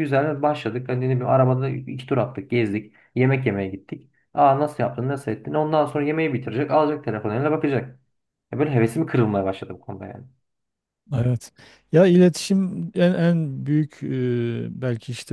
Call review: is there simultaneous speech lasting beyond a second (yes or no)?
no